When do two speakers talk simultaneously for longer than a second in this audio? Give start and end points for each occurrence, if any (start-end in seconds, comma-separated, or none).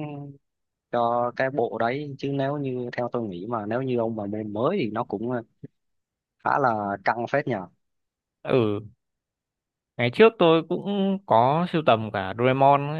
none